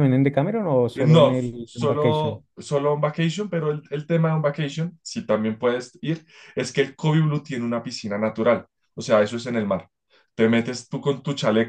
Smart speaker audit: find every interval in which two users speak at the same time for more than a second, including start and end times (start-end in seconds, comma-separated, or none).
0.9-2.4